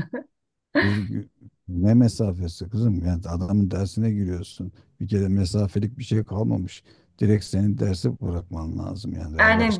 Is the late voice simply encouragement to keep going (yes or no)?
no